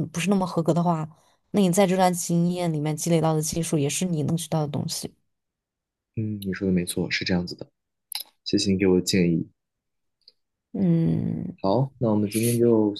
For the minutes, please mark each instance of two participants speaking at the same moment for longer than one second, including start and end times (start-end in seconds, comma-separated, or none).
none